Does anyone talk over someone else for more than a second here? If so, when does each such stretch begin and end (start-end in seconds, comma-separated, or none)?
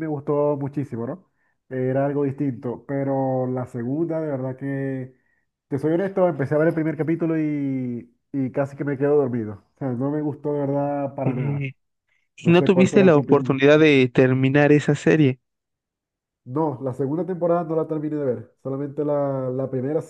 12.4-13.6